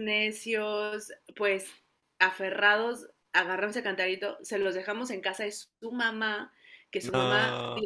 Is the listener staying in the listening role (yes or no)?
yes